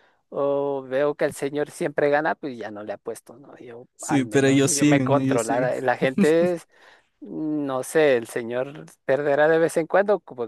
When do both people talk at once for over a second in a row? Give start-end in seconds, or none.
4.0-5.7